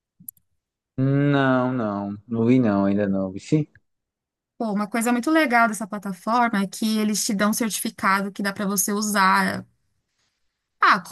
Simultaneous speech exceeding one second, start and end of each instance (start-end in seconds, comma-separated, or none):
none